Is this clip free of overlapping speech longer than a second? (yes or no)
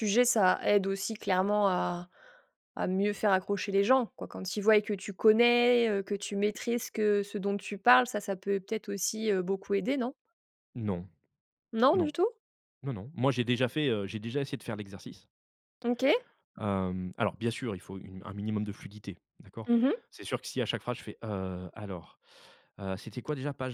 yes